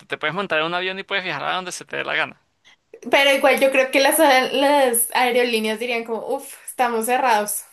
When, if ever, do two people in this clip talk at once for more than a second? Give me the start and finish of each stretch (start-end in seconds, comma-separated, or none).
none